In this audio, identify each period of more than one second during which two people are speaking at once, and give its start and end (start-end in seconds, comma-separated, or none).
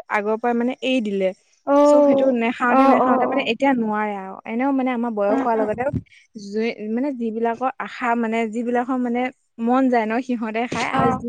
1.9-3.5